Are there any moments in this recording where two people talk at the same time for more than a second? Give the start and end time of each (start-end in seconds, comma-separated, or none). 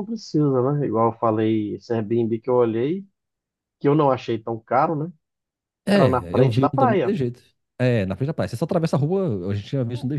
5.9-7.1